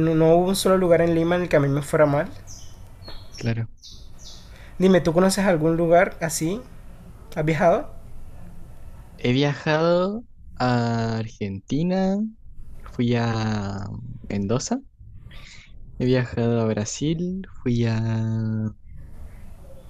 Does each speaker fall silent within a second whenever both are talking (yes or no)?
yes